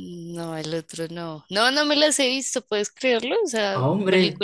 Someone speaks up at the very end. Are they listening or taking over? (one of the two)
listening